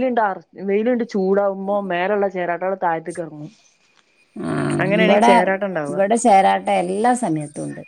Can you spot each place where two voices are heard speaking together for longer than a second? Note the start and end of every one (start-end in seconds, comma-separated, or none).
none